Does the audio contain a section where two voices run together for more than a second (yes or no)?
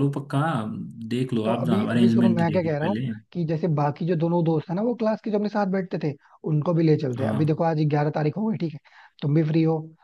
yes